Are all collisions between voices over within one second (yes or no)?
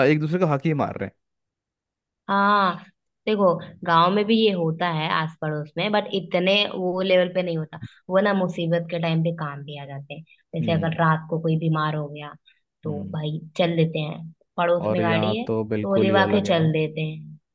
no